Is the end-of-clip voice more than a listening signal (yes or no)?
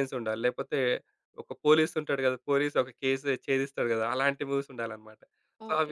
yes